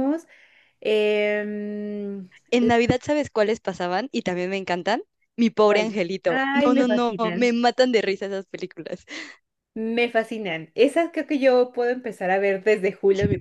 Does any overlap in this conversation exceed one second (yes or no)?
yes